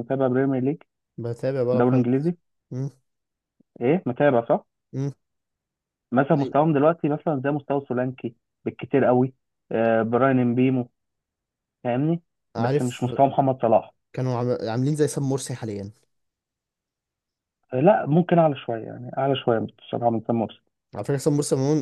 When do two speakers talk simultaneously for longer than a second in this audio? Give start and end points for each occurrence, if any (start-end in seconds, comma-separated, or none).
none